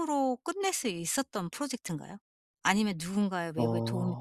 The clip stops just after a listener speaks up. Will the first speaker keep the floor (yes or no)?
yes